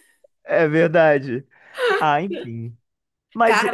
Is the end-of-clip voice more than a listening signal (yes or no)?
no